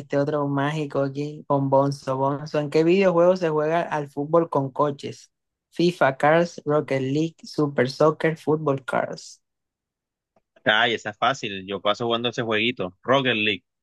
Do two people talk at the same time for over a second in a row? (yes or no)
no